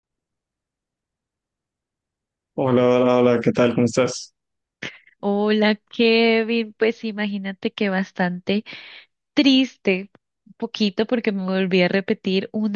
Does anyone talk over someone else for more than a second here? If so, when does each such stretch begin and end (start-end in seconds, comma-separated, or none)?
none